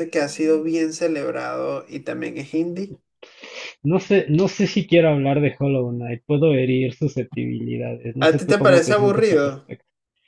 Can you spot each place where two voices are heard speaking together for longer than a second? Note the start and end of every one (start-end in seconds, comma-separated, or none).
8.2-9.5